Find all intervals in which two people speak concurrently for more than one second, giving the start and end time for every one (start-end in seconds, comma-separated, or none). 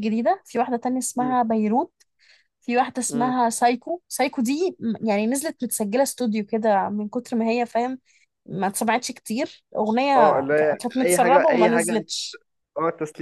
10.2-12.0